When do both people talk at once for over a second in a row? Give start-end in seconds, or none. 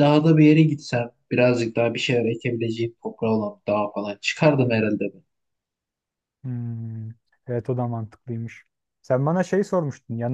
none